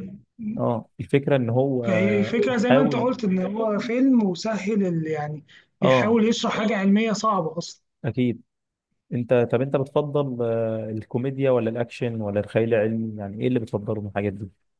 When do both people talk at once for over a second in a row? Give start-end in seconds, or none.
1.9-3.1